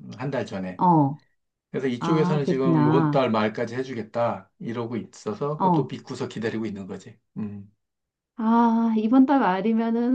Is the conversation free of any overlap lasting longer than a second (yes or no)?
no